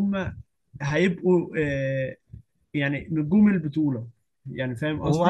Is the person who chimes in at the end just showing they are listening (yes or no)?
no